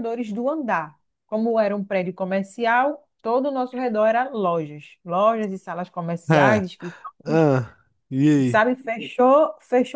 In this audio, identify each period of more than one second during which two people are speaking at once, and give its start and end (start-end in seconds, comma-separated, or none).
none